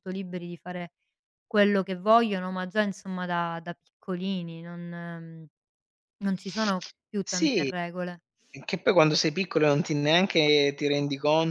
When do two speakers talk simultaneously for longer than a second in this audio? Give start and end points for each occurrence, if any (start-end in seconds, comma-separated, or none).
none